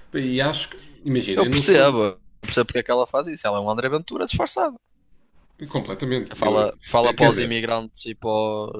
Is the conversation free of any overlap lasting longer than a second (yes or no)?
no